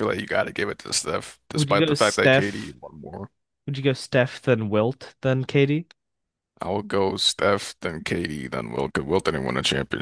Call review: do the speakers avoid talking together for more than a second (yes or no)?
no